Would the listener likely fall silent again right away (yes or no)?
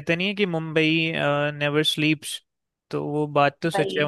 yes